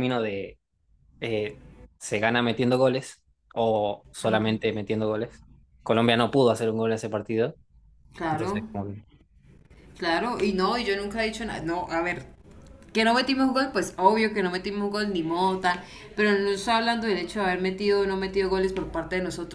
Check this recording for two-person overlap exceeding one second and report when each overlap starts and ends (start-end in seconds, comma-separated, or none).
none